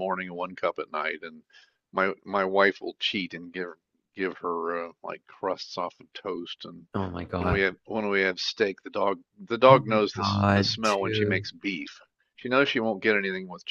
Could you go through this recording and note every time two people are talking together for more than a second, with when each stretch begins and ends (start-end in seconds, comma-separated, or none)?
9.7-11.5